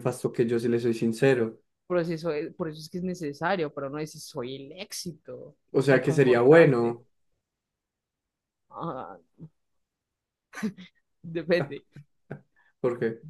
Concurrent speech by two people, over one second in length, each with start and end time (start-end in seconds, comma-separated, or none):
5.7-7.0